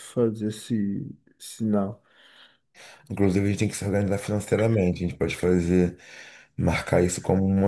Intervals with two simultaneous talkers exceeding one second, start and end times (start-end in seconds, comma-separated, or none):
none